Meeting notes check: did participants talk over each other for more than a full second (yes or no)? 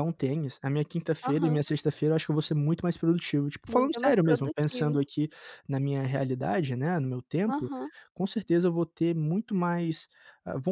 yes